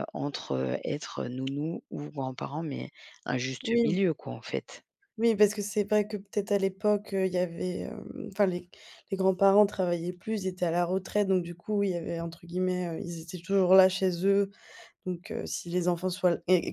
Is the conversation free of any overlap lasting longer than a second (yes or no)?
yes